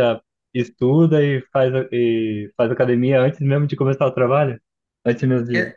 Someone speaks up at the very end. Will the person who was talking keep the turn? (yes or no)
no